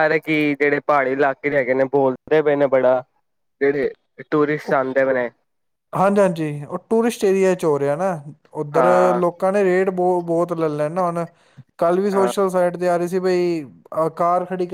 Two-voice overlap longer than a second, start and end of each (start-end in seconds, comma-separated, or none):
none